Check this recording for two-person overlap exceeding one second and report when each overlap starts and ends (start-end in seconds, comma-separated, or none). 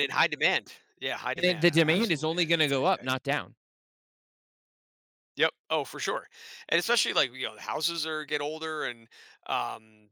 1.3-3.1